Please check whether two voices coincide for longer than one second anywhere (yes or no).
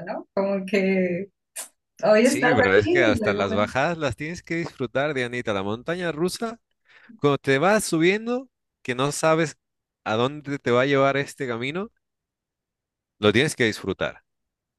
yes